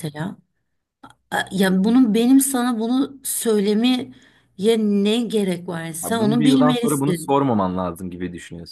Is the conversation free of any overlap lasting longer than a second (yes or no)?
no